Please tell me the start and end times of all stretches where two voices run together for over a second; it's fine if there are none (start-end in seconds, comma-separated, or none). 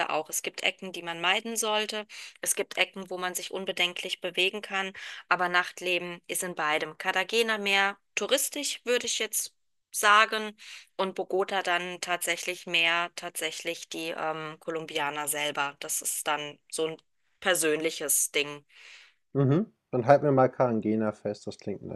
none